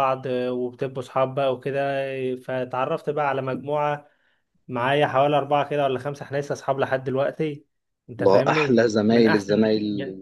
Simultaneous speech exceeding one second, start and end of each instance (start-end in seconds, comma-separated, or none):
8.2-9.5